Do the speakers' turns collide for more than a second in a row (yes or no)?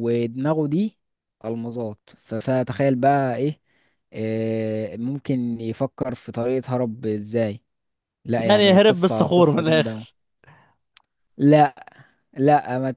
yes